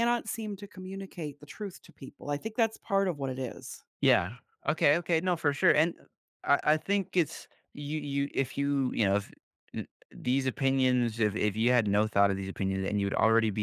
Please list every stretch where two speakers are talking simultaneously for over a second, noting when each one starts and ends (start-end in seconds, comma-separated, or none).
none